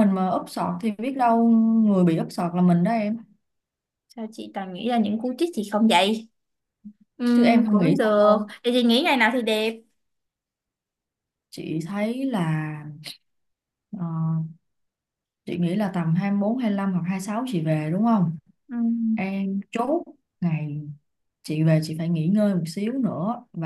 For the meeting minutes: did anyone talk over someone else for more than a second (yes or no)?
yes